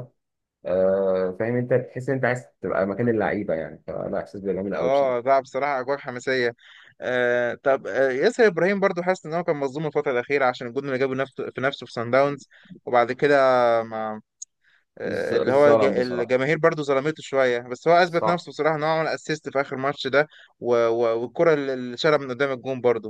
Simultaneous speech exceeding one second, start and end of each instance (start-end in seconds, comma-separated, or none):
15.1-16.4